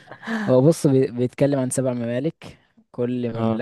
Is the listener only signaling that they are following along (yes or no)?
yes